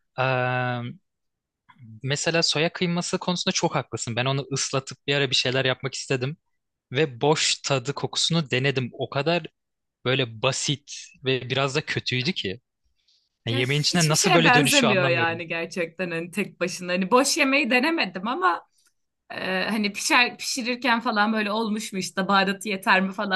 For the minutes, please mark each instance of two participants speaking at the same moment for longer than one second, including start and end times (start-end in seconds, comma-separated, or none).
13.5-15.4